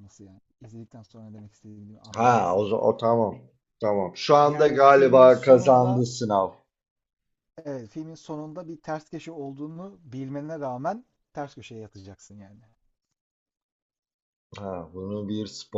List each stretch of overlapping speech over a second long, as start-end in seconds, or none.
4.4-6.0